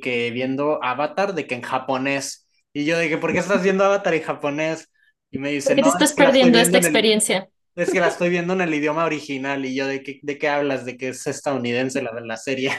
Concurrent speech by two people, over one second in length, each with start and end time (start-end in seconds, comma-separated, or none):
5.6-7.1